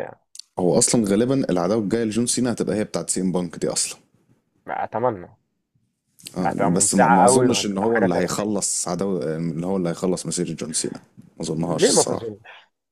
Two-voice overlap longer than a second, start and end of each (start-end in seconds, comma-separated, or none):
6.4-8.5